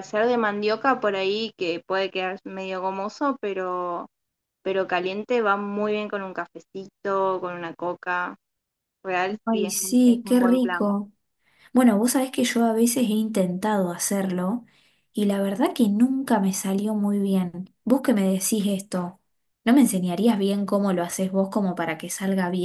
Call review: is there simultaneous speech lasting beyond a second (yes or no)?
yes